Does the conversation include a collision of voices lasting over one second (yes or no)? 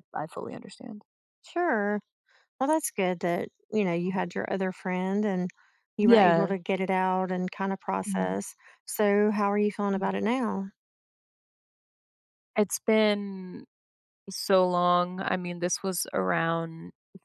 no